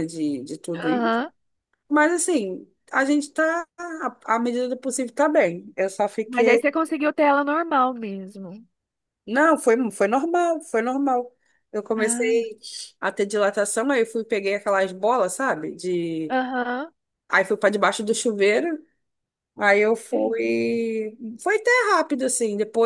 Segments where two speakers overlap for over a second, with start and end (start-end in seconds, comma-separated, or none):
none